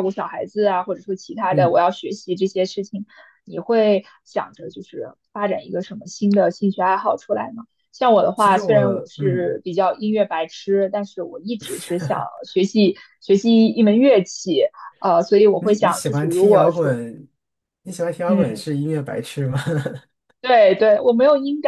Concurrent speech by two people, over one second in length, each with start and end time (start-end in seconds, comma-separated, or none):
8.3-9.6, 15.6-16.9